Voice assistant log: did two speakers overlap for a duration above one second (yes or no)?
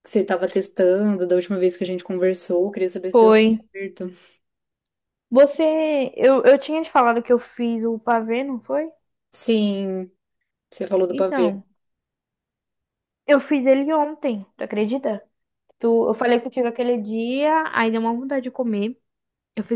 no